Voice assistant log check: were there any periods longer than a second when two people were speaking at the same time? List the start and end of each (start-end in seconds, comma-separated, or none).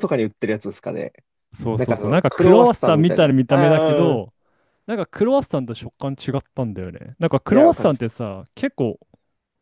1.8-4.2